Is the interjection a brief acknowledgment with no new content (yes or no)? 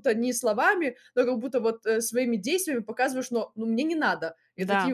yes